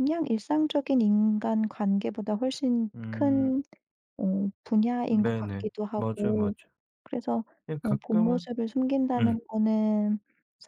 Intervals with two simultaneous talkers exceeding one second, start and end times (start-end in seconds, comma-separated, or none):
5.1-6.5